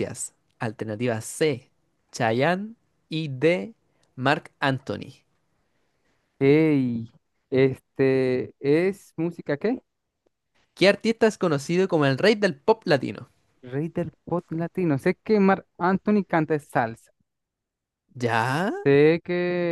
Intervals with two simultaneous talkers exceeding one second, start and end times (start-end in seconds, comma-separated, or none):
none